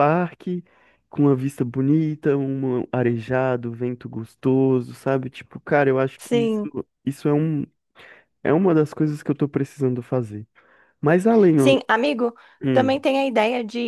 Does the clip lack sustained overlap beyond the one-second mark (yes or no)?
yes